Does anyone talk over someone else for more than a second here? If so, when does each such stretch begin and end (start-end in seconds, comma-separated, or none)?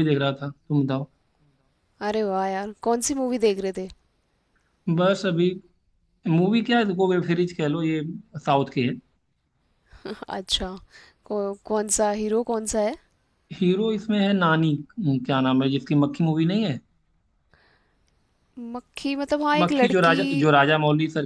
none